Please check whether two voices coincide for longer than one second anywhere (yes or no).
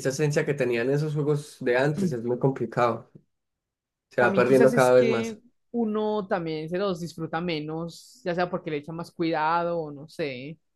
yes